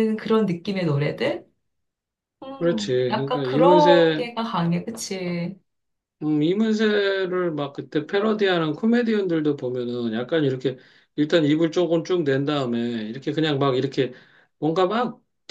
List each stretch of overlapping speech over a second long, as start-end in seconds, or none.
2.6-4.3